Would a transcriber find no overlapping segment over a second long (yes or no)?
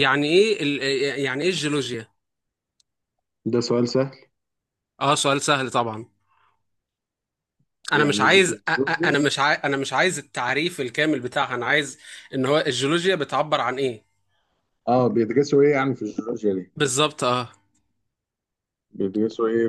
no